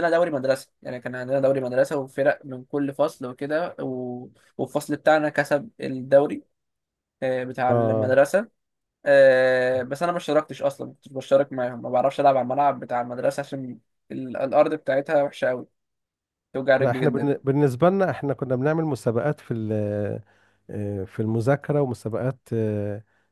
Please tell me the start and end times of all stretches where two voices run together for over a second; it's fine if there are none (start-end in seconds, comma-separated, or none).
none